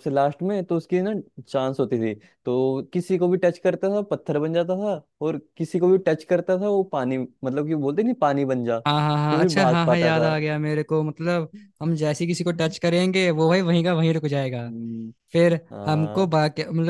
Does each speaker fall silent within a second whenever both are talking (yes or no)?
no